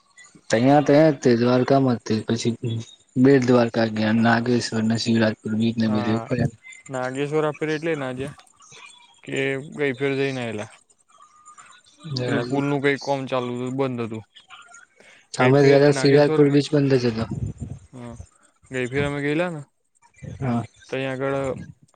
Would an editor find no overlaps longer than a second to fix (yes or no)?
yes